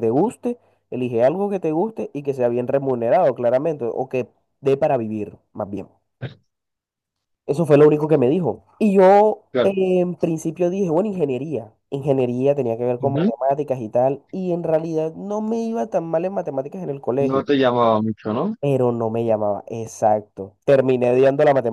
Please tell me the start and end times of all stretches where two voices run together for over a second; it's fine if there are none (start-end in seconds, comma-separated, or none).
none